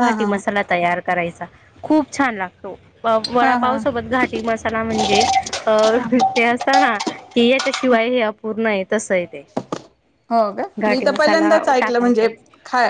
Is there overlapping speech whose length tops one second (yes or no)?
yes